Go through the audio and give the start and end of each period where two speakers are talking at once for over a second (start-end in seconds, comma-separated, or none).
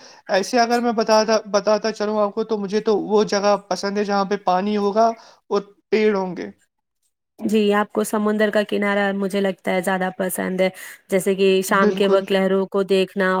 none